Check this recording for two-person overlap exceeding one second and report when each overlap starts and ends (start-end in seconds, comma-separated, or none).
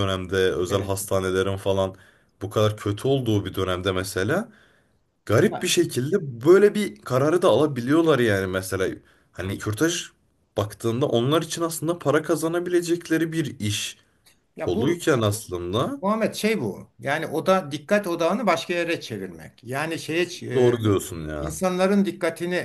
none